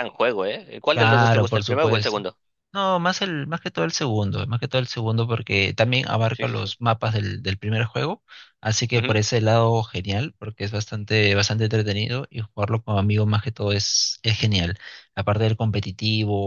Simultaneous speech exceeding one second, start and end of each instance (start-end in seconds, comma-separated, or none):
0.9-2.2